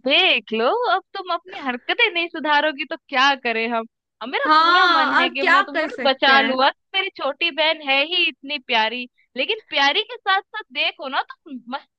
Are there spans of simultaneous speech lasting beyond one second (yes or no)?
yes